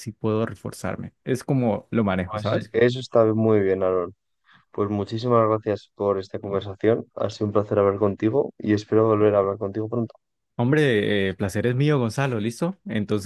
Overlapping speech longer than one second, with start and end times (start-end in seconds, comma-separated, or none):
none